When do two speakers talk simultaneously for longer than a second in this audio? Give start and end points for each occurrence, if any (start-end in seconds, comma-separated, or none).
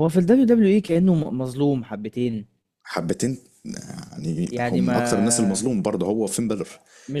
4.5-5.7